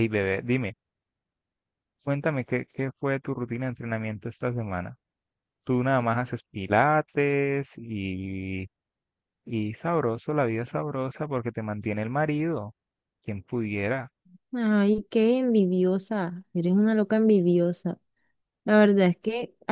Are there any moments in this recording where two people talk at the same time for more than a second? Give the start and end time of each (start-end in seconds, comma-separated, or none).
none